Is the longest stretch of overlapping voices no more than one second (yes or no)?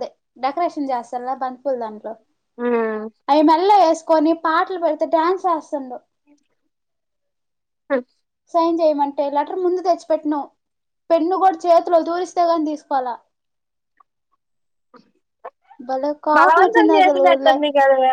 no